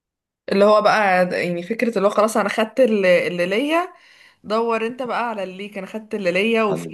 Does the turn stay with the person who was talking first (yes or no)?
yes